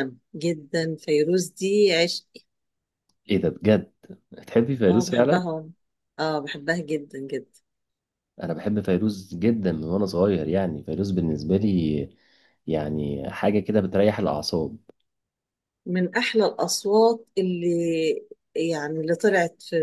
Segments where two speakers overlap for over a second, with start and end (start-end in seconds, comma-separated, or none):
none